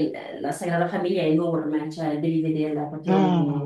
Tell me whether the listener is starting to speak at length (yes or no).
no